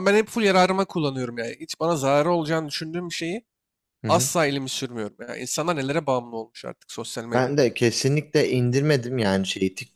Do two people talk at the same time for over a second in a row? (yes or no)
no